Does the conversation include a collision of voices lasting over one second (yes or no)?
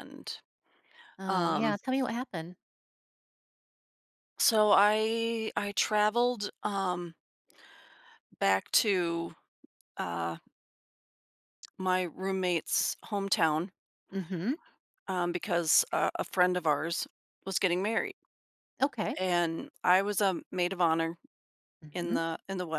no